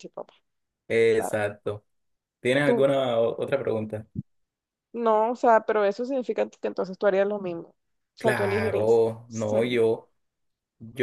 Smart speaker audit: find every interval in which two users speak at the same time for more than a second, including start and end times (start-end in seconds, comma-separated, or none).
8.2-9.8